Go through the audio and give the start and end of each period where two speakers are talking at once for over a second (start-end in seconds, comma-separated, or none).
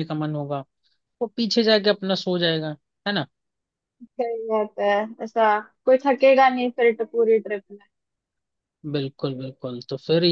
none